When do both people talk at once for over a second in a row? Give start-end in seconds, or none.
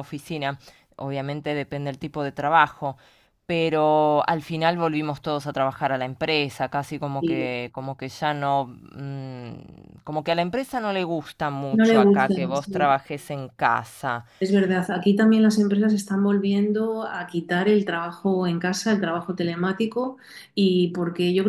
11.7-12.9